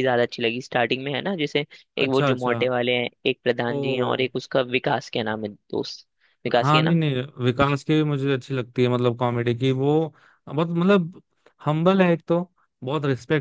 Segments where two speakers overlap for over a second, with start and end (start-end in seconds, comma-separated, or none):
none